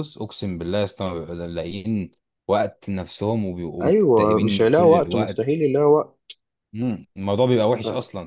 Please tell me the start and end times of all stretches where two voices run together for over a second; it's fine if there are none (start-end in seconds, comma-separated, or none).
3.8-5.5